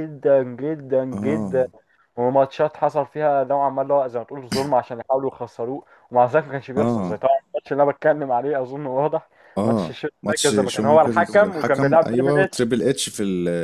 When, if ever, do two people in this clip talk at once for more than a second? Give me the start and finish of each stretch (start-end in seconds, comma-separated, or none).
9.6-12.7